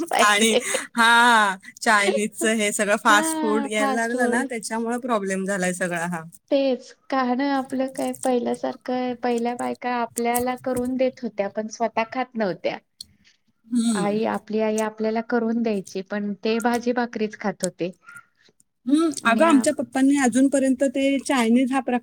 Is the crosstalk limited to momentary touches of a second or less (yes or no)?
no